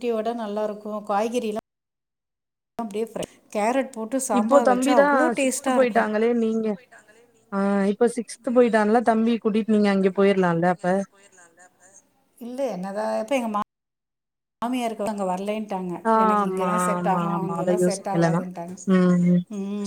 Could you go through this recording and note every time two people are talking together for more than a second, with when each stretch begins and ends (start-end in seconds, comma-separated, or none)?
4.4-6.1, 16.1-18.4